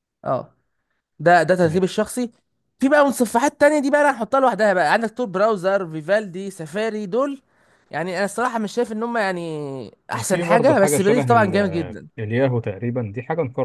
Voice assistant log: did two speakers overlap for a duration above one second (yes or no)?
yes